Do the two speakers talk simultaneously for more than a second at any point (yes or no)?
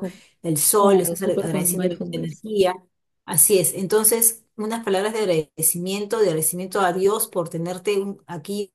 yes